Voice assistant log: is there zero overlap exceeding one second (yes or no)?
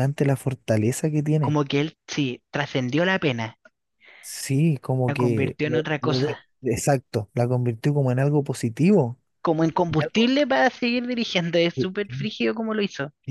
no